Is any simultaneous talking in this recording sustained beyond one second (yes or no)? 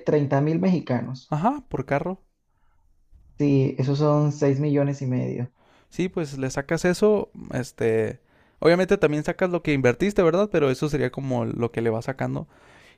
no